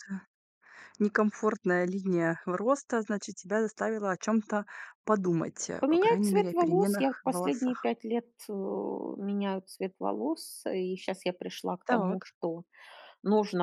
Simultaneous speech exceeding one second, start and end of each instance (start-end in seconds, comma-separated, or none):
5.8-7.9